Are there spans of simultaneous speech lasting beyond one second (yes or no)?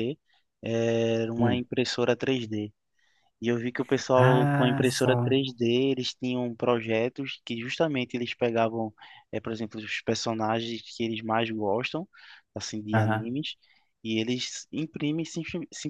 yes